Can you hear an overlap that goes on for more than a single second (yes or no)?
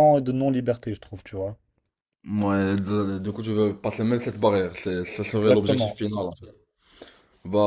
no